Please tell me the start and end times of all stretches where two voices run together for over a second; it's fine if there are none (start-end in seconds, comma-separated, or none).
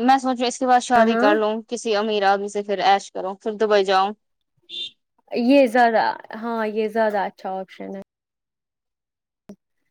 none